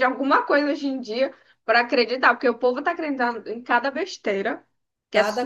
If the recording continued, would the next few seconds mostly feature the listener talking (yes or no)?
yes